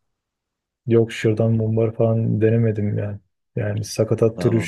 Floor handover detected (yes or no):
no